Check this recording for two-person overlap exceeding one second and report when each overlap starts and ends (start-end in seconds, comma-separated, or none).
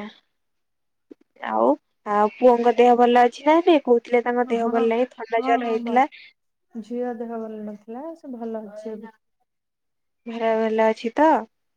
4.5-6.0